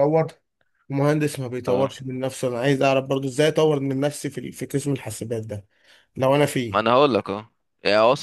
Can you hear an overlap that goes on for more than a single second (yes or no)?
no